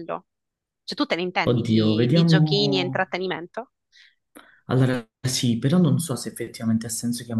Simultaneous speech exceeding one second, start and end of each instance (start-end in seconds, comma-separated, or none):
1.4-3.0